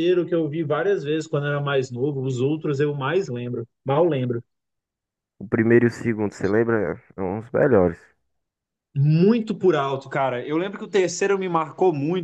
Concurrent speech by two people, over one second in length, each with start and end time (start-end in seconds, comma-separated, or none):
none